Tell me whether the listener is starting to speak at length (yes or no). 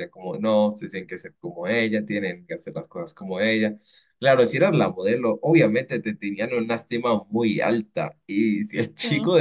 no